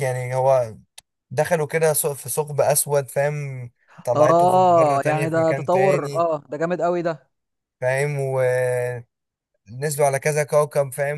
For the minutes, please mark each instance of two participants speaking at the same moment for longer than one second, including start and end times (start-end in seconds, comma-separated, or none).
4.2-6.3